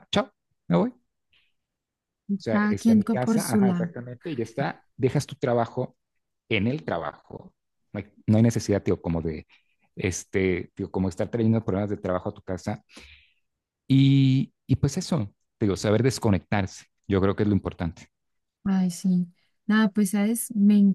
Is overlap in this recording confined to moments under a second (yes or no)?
no